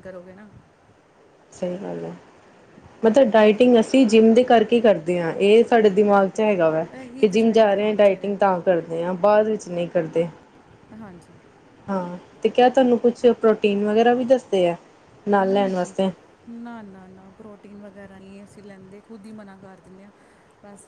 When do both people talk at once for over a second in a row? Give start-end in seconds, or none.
7.2-8.6